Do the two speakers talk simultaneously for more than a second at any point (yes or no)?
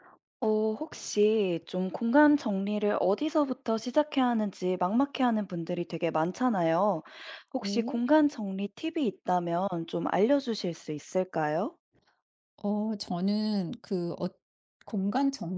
no